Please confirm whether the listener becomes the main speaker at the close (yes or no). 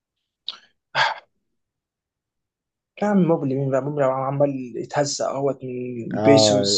yes